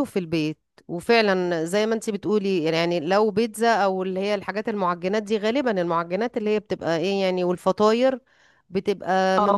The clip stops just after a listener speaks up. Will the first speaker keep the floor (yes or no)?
yes